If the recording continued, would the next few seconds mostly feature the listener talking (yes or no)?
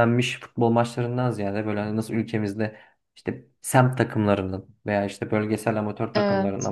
no